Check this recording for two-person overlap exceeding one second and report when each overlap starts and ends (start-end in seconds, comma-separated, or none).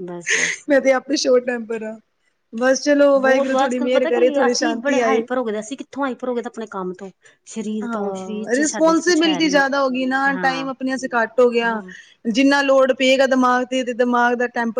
3.2-5.2, 7.8-9.6